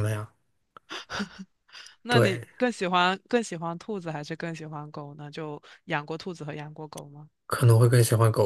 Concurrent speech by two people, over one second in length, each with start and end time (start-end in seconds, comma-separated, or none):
none